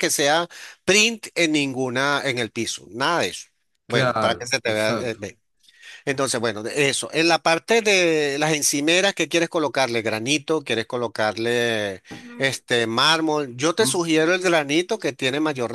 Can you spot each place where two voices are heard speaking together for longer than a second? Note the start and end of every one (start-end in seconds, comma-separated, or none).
3.9-5.2